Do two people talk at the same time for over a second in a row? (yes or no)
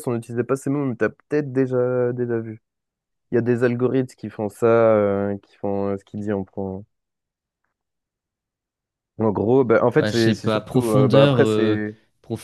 yes